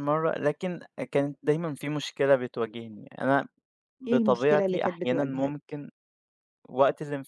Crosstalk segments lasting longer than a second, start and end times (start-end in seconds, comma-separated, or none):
4.1-5.6